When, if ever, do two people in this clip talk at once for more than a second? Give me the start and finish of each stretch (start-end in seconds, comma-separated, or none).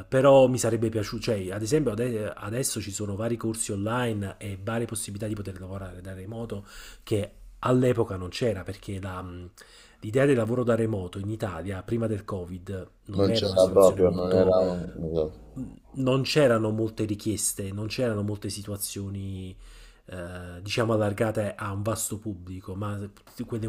13.2-14.6